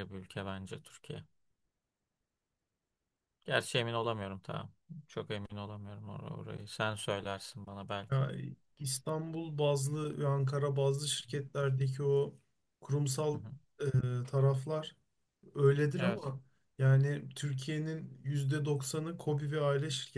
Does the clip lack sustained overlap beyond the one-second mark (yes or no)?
yes